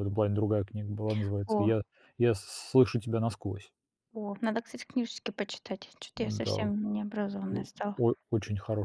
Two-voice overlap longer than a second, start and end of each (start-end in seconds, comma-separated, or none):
none